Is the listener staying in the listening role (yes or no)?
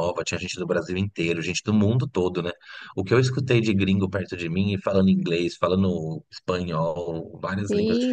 no